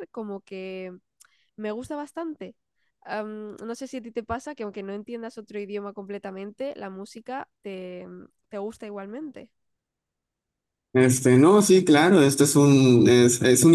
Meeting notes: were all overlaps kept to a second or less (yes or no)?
yes